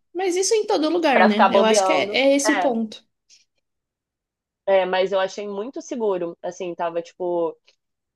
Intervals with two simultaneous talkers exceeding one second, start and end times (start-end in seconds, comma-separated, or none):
1.1-2.8